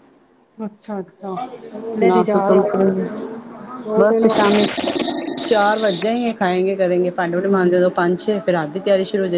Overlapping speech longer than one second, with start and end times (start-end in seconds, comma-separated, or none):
none